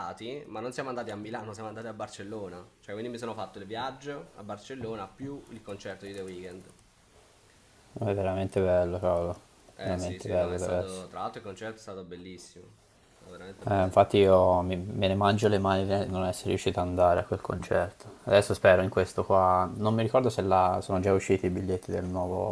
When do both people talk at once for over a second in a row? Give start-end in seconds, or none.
9.8-11.1